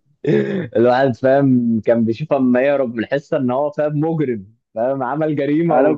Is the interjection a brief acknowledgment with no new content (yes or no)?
no